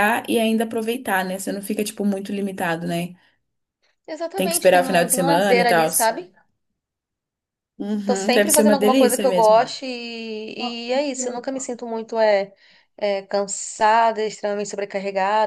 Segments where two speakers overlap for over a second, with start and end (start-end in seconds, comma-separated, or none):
4.3-5.9, 8.0-9.7